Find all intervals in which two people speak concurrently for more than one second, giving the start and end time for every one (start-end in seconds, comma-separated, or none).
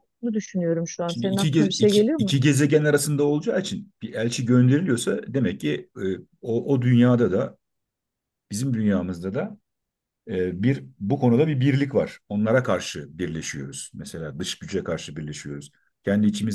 1.1-2.3